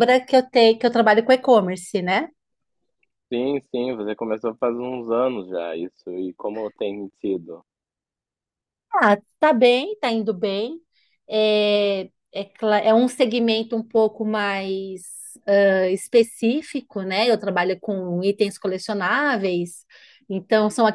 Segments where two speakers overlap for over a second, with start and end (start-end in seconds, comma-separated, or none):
none